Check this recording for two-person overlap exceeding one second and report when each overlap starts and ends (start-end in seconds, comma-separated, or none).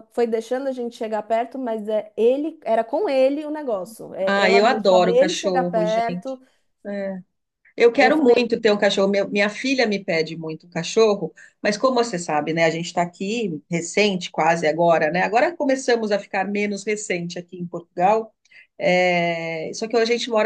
4.2-6.4